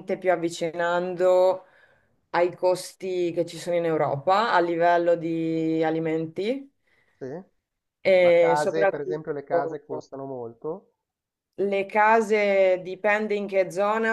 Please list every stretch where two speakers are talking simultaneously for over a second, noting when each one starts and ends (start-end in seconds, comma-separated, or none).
8.2-9.8